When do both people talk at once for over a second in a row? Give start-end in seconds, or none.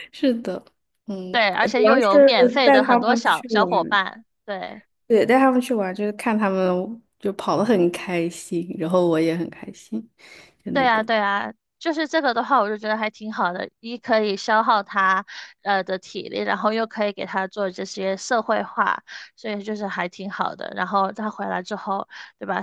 1.3-4.0